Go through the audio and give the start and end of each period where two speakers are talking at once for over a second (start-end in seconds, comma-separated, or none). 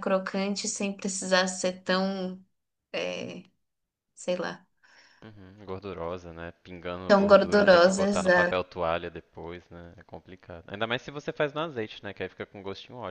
7.1-8.6